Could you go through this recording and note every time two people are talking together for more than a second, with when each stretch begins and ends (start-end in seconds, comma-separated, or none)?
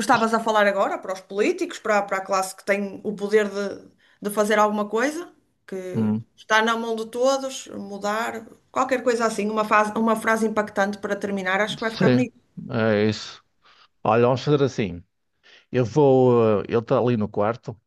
none